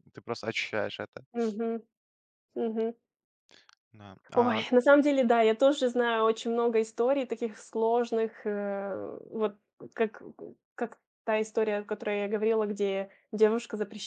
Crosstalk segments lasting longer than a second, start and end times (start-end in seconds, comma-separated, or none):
none